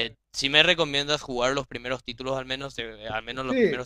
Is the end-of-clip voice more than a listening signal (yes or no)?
yes